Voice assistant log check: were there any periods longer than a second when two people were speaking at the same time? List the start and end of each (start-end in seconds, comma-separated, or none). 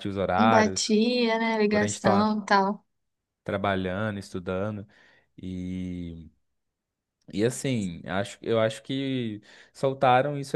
none